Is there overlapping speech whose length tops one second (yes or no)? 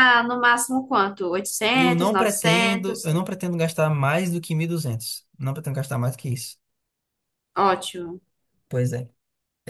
yes